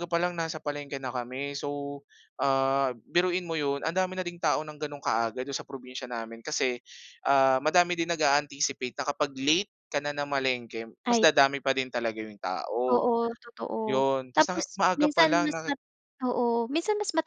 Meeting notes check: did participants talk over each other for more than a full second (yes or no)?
yes